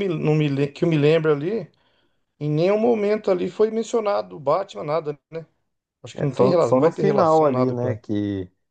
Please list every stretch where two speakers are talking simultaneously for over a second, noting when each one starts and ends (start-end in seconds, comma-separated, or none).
6.1-8.0